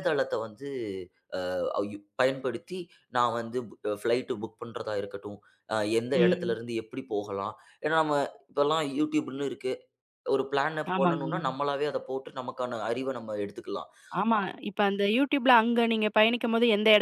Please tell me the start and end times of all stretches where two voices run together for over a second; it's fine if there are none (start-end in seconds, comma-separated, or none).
none